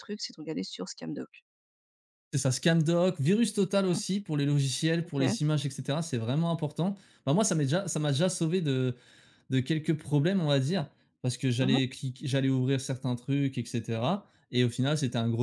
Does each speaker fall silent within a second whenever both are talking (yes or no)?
yes